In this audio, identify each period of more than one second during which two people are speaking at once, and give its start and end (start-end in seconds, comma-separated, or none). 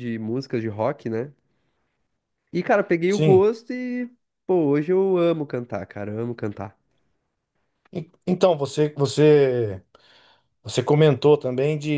none